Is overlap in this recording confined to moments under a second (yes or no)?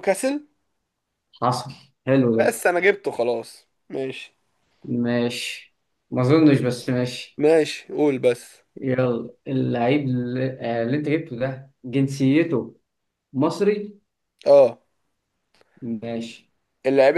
yes